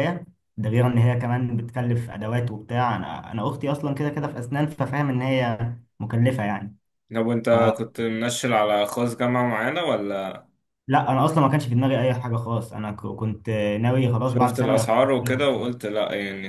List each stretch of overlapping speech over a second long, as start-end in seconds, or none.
14.2-15.5